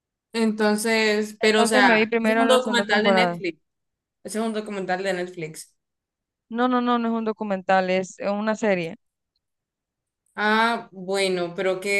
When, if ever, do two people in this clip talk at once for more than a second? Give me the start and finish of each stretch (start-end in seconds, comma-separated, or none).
1.5-3.4